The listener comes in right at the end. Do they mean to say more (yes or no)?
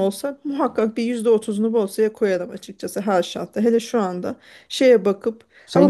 yes